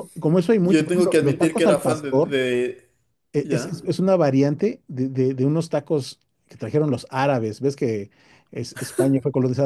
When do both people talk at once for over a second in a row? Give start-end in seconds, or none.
0.6-2.4